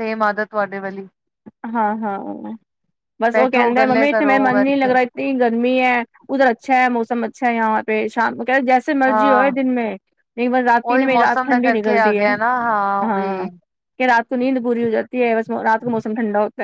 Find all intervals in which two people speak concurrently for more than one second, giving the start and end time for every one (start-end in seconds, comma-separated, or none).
3.3-4.9, 10.9-12.3